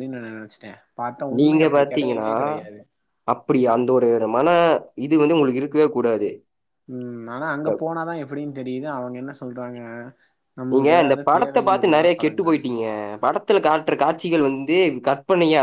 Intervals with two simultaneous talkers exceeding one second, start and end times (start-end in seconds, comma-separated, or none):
10.7-12.6